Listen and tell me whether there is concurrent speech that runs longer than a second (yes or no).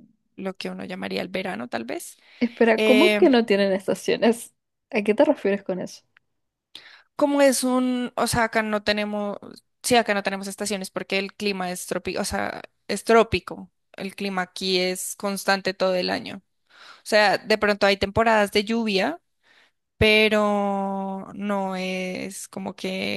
no